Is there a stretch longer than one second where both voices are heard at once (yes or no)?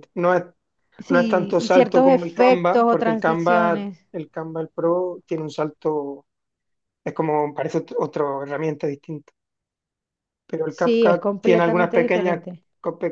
yes